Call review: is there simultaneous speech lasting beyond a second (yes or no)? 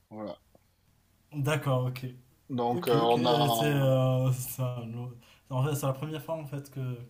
yes